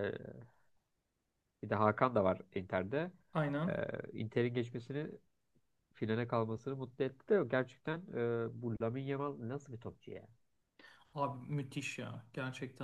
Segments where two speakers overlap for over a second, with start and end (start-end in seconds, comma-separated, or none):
none